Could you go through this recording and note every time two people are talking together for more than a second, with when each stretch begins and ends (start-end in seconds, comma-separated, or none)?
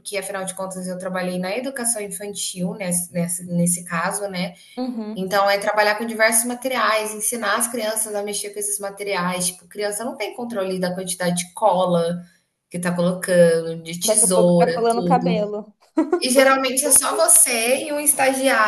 14.0-15.4